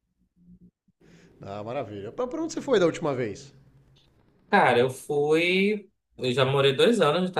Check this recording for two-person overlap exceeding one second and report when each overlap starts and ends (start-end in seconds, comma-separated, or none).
none